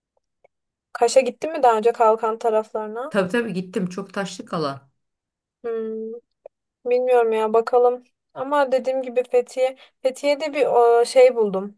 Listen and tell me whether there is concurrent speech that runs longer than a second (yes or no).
no